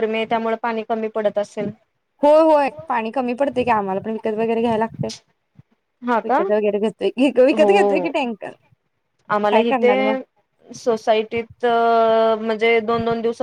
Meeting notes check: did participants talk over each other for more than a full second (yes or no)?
no